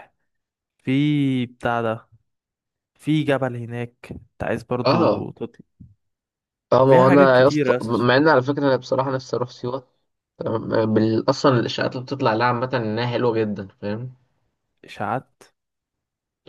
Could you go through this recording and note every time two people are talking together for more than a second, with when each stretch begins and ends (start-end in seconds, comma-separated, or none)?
6.9-8.1